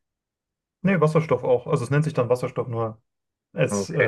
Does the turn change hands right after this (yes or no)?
no